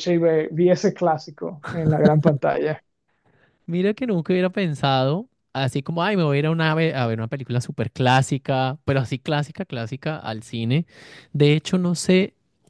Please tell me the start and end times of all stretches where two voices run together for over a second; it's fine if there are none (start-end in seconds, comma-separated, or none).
none